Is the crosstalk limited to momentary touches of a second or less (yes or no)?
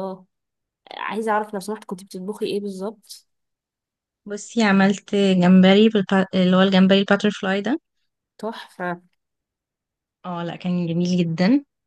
yes